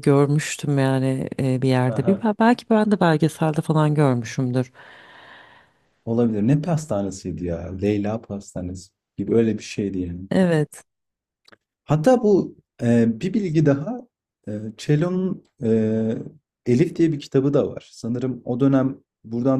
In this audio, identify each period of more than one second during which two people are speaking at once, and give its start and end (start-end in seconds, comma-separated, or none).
none